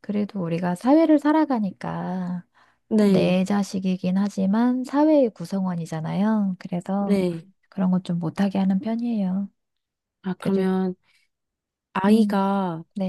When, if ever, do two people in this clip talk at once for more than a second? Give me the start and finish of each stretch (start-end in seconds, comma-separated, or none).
none